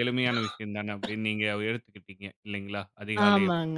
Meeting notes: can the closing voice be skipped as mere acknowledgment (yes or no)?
no